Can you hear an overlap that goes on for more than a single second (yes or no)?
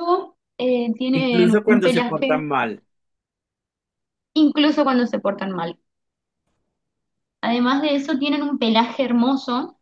yes